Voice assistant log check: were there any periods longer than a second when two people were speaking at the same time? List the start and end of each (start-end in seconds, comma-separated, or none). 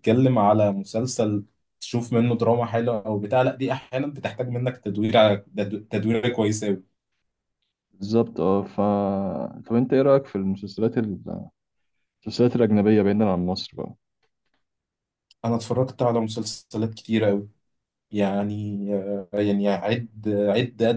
none